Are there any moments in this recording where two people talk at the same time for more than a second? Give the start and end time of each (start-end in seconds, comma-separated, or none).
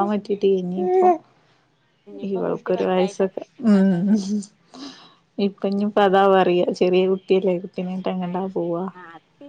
2.3-4.0